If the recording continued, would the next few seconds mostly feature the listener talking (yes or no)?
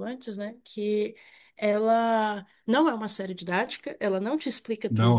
no